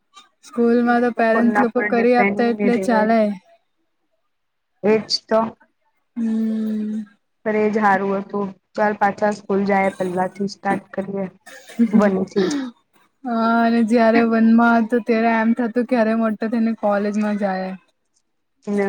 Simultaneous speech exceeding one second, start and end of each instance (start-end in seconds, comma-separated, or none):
1.0-3.2